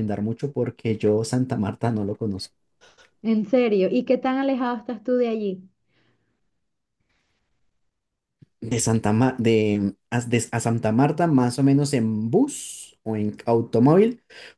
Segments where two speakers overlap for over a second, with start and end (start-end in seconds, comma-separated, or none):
none